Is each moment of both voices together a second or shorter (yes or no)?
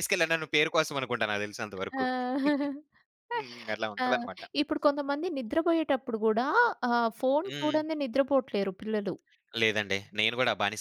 yes